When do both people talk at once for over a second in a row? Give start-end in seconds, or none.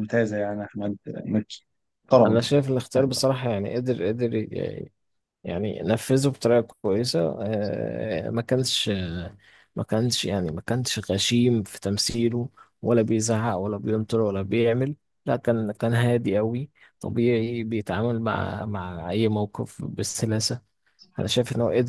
none